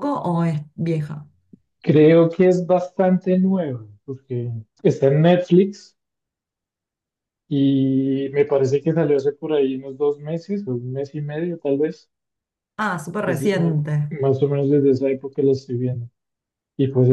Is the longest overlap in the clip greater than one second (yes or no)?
no